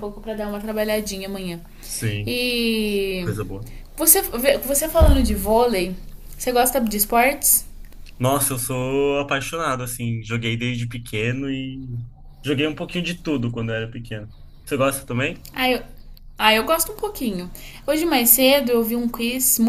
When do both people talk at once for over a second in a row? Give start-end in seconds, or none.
none